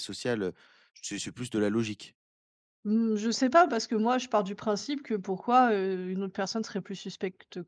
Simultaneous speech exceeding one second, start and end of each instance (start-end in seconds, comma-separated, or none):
none